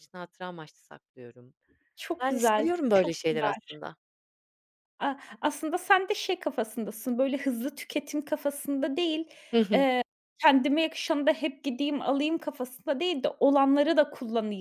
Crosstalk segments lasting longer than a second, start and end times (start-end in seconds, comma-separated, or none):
2.2-3.8